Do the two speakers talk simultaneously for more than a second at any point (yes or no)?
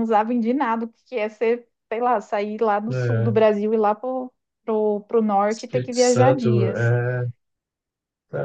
yes